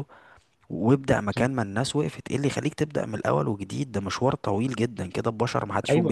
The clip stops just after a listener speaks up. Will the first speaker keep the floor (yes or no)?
no